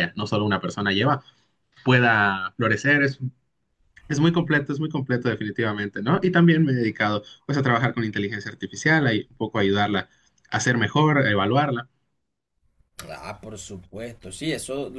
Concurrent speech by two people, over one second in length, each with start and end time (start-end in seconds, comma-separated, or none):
none